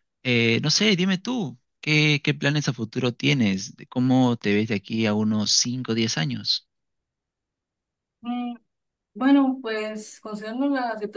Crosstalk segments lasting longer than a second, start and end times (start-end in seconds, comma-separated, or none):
none